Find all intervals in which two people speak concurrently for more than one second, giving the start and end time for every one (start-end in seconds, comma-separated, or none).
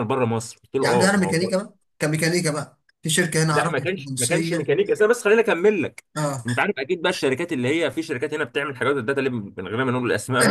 3.5-4.8